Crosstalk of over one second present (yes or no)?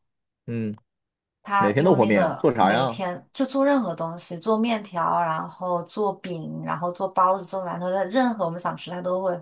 yes